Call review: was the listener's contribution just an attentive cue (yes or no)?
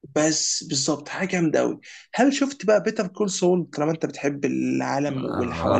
no